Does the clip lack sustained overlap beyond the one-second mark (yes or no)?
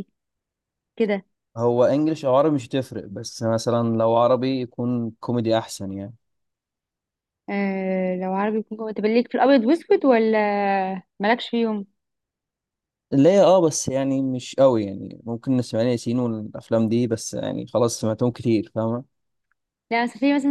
yes